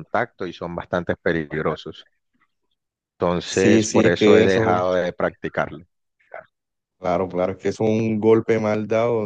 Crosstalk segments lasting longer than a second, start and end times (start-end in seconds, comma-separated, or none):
3.4-4.8